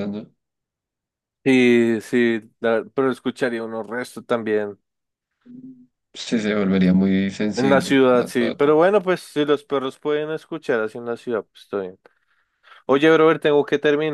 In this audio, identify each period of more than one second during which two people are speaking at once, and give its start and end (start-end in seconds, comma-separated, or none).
7.5-8.8